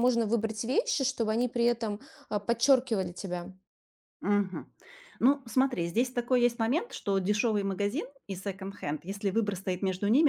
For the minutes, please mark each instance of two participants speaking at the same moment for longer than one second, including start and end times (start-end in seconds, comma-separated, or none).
none